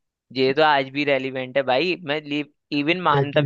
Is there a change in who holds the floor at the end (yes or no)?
no